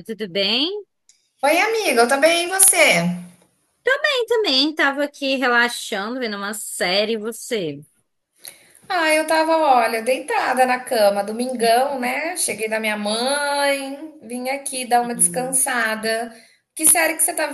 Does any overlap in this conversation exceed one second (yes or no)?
no